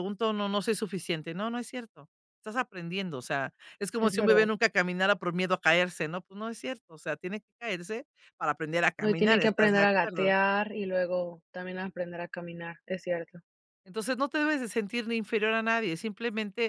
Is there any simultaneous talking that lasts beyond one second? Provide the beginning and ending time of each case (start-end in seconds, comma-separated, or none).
9.0-10.3